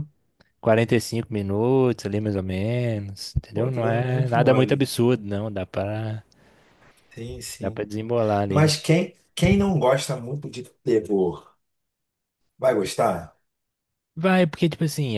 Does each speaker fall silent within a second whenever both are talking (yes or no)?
no